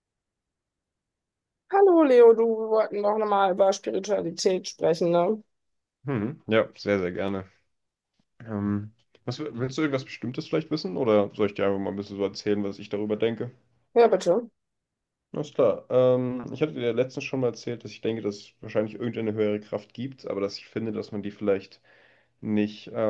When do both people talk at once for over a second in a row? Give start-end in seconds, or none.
none